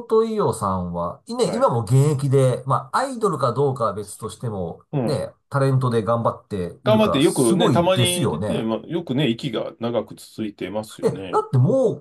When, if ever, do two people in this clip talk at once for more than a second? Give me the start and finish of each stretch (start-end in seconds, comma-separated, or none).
6.8-8.6